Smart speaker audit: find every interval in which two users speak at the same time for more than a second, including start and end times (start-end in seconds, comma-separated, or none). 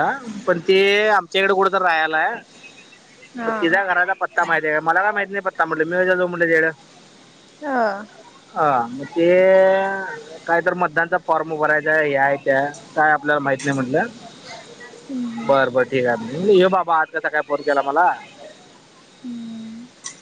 none